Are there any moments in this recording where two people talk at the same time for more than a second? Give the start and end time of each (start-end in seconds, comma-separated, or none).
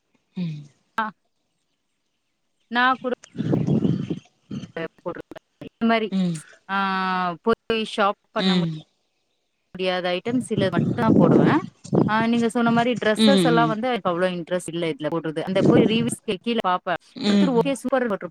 none